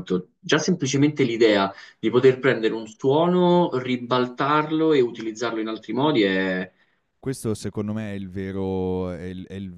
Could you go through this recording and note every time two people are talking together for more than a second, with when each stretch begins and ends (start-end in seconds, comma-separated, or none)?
none